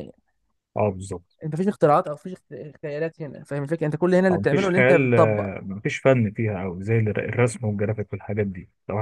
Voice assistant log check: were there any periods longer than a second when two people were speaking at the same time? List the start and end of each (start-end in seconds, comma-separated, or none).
4.3-5.5